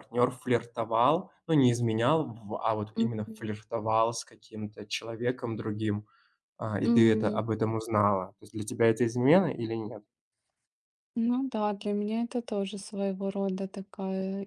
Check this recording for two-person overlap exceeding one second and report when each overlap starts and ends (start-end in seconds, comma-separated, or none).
none